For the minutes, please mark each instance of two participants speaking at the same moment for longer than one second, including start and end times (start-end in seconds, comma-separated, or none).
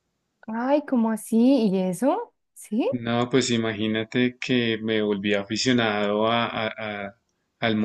none